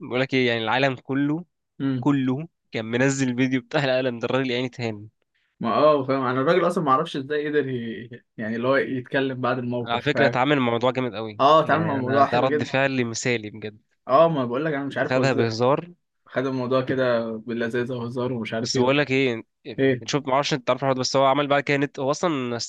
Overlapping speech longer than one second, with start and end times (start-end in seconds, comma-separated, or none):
11.4-12.7